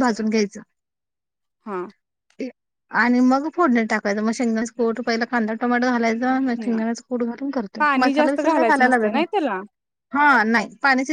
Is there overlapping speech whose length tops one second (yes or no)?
yes